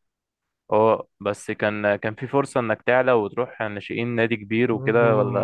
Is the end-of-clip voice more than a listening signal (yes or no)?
yes